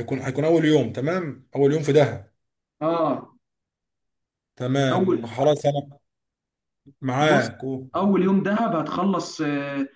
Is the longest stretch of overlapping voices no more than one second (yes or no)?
yes